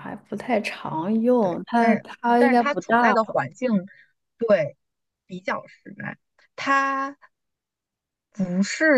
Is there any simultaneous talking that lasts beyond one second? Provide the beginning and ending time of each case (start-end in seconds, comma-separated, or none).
1.4-3.4